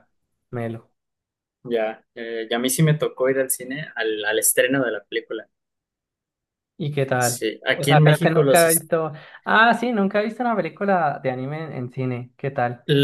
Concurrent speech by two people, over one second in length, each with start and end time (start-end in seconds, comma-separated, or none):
7.2-8.8